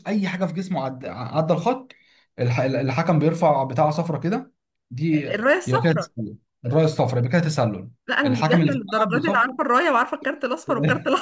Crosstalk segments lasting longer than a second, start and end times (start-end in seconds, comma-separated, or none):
8.2-9.6